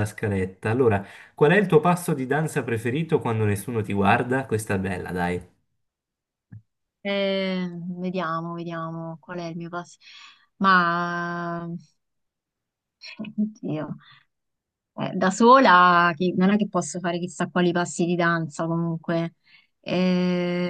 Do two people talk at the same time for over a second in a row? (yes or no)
no